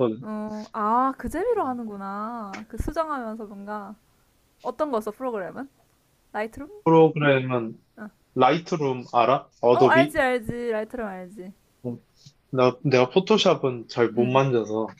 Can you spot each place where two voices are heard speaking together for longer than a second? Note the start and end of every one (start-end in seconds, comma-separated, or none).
none